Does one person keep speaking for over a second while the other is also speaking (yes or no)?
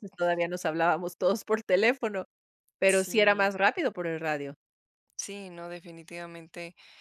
no